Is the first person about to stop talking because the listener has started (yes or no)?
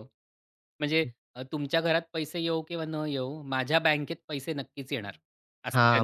yes